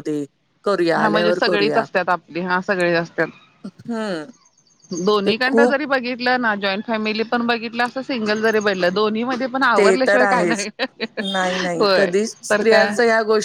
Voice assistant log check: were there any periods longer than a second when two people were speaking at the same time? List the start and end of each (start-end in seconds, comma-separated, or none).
none